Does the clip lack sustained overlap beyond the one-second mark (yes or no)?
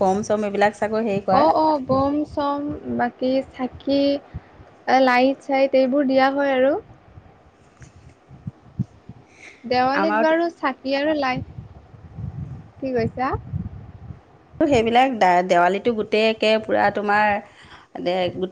yes